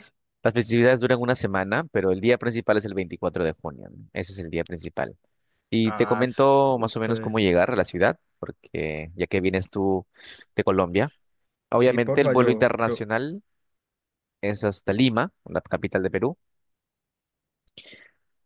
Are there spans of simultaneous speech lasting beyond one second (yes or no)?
yes